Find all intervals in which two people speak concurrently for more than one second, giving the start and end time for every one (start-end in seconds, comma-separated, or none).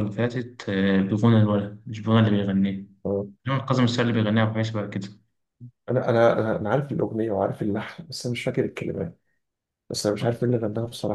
none